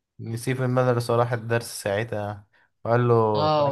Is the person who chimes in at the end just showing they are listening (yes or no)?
no